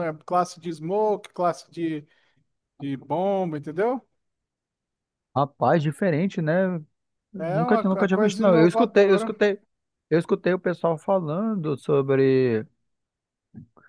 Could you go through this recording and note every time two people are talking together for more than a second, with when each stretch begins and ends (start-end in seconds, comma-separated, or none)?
7.4-9.3